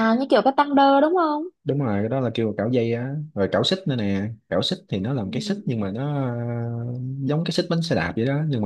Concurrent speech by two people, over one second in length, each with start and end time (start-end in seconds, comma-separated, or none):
none